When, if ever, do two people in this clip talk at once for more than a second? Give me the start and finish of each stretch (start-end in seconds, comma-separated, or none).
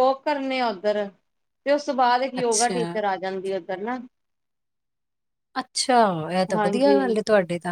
none